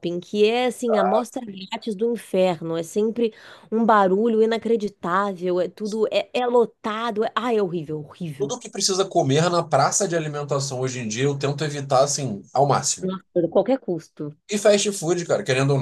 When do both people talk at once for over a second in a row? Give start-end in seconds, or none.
none